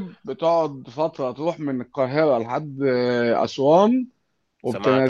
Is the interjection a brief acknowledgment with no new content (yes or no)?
yes